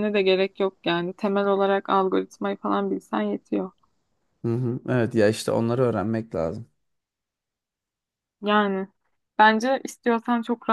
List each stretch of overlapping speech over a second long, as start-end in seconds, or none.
none